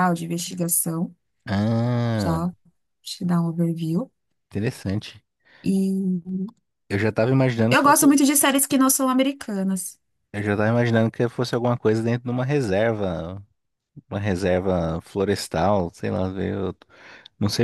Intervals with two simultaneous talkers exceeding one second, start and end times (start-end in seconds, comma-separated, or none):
none